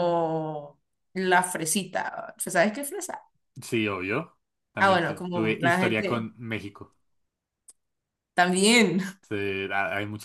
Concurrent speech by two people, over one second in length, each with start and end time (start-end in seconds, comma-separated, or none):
4.8-6.3